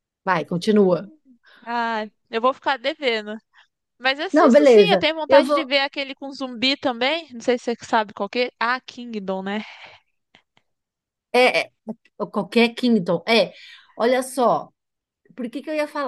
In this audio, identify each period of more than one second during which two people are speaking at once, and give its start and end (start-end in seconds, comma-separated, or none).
4.3-5.7